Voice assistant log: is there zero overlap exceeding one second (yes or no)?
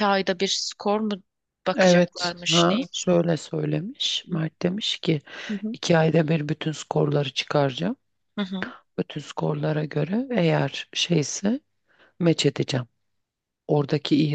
no